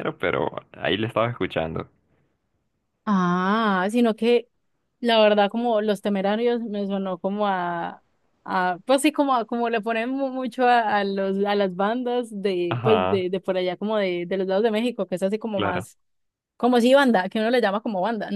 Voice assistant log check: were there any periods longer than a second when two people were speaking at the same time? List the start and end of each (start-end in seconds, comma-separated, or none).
none